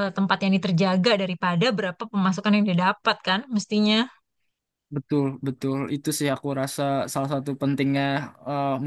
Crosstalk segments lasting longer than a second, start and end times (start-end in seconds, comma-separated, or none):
none